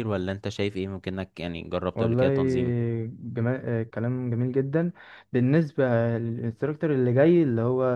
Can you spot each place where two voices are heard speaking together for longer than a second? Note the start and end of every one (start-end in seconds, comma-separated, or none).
none